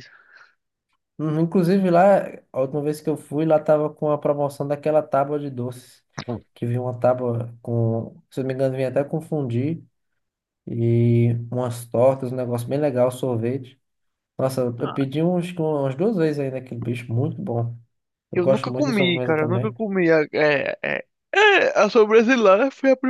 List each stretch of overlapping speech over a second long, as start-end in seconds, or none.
18.3-19.8